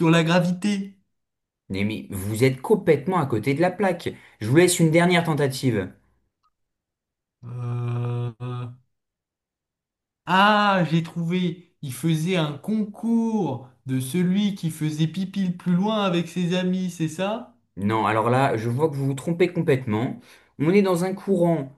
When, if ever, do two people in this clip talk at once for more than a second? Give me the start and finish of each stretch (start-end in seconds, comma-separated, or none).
none